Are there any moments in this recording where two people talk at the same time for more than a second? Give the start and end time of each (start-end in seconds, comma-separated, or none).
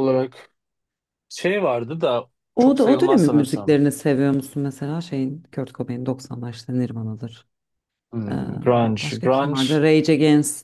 2.5-3.8, 8.3-9.8